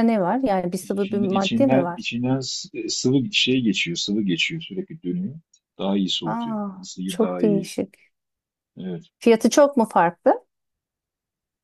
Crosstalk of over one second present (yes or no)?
yes